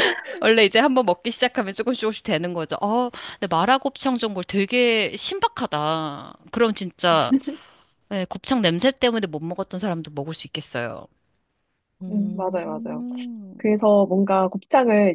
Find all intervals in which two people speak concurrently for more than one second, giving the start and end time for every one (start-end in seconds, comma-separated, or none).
none